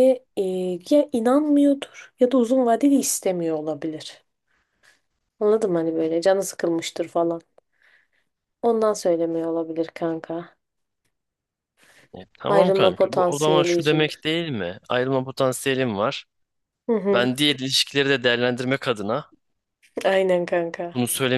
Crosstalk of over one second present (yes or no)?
yes